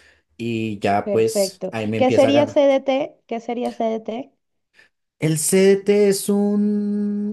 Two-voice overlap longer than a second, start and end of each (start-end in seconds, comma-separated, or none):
1.0-2.6